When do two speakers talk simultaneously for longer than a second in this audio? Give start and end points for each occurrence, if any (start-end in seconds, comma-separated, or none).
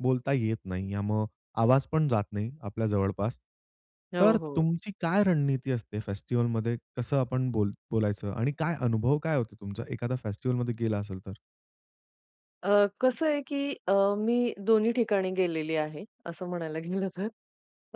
none